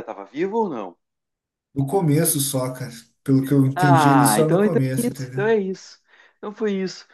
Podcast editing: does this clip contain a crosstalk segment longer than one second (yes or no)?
yes